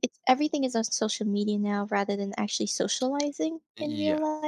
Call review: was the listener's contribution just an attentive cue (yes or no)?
no